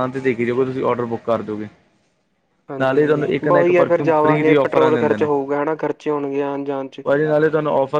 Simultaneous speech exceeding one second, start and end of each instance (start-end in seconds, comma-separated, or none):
2.8-5.3